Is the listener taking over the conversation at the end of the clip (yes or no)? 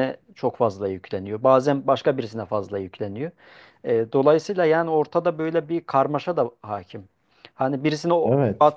no